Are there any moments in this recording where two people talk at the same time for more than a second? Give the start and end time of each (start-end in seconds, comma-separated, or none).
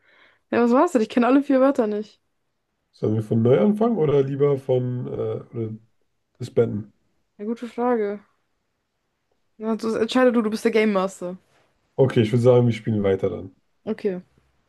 none